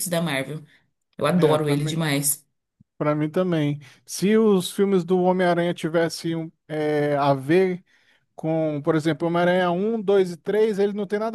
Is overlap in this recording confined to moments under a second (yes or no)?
yes